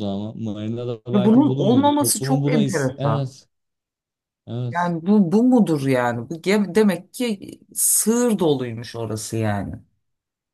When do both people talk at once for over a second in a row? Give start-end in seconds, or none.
1.1-3.3